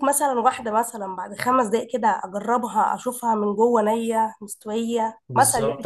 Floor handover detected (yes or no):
yes